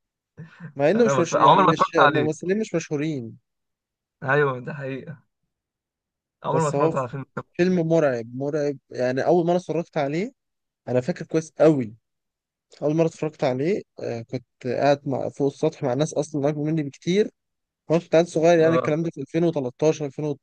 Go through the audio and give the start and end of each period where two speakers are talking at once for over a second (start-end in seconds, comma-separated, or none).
0.9-2.5